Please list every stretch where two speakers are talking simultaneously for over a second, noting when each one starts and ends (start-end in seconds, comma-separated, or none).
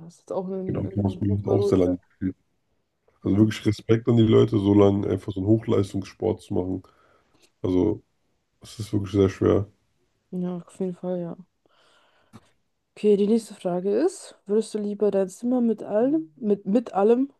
0.6-2.0